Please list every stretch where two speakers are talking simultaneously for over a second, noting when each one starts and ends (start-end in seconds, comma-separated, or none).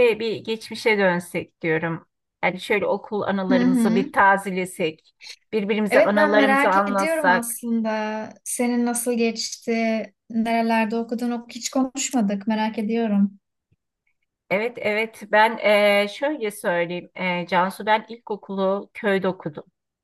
5.9-7.6